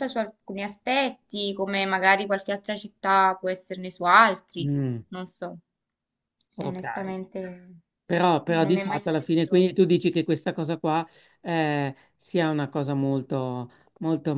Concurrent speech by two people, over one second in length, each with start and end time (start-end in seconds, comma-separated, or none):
8.5-9.9